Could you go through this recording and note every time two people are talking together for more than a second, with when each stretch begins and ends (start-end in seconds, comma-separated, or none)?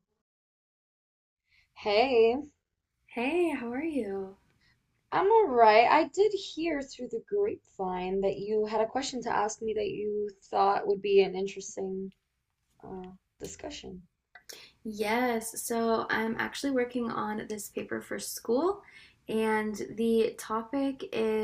none